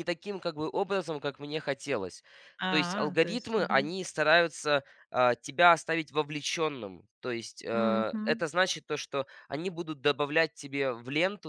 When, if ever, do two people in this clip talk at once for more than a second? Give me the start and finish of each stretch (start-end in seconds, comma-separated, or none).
2.7-3.9